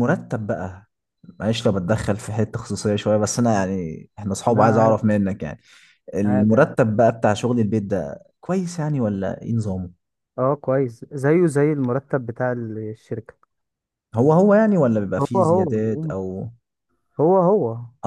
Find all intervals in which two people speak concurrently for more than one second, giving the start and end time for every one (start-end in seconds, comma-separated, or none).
none